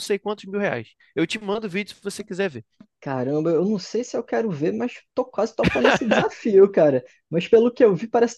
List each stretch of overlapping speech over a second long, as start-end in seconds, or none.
none